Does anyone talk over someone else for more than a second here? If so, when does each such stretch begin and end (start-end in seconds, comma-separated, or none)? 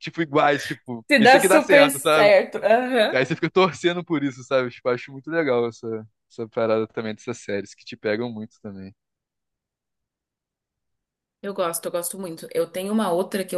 1.1-2.3